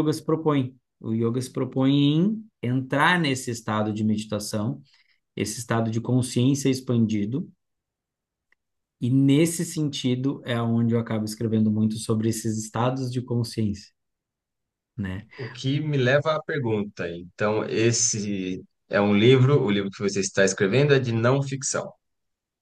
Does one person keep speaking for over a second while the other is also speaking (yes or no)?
no